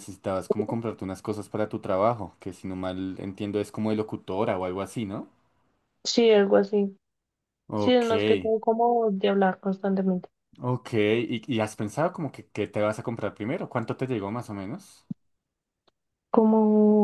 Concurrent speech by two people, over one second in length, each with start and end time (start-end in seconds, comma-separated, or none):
none